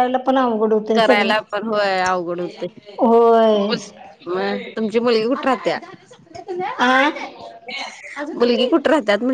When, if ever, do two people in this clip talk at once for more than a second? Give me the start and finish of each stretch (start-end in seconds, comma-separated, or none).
none